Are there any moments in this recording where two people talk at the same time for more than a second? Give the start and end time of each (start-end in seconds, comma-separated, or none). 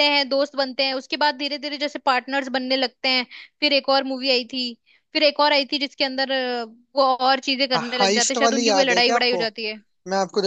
7.8-9.4